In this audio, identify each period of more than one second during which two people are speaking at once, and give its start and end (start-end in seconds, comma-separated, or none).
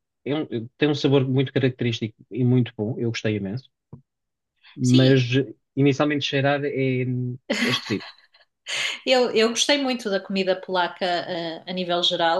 none